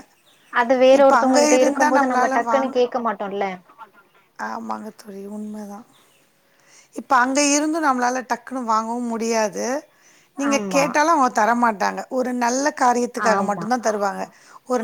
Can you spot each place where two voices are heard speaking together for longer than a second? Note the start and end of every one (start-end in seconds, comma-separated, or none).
1.0-2.7